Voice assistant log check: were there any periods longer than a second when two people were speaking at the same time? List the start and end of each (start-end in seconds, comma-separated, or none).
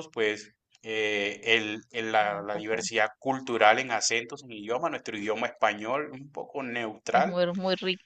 none